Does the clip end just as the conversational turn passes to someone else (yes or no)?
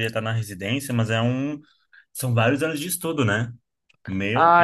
yes